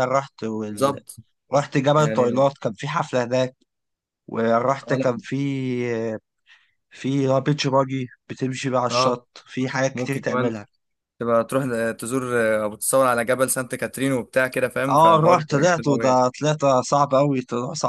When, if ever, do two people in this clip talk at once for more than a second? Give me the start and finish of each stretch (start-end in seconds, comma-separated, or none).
14.9-16.2